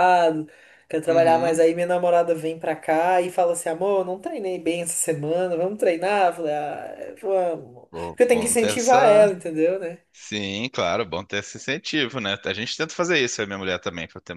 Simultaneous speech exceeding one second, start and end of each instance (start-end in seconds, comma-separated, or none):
7.9-9.3